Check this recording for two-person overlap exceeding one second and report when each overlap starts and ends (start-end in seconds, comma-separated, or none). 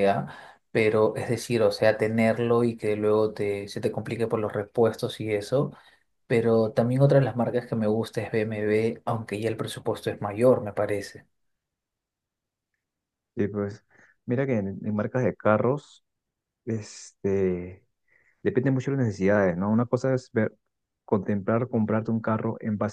none